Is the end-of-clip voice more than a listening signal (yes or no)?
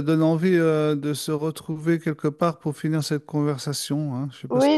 yes